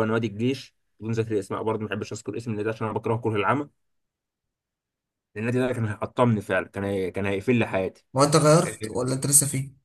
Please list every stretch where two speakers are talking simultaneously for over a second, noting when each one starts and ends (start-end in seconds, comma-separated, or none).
none